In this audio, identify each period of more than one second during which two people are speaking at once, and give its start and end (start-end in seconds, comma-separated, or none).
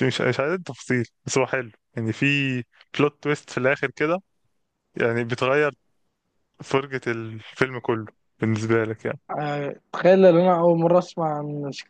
none